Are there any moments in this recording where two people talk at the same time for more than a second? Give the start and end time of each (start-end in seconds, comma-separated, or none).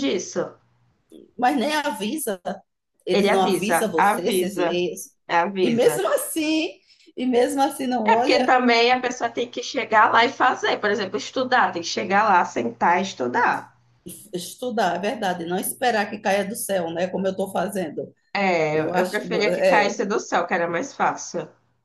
3.1-4.8, 18.7-20.0